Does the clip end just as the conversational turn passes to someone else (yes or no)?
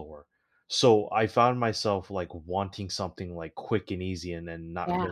no